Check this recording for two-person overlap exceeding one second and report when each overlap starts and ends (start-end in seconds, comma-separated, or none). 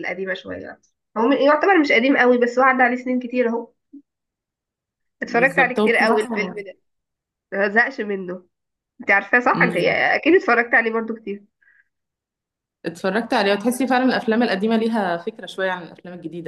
5.2-6.7